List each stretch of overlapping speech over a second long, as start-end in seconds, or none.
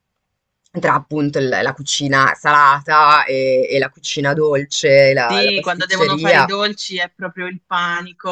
5.3-6.5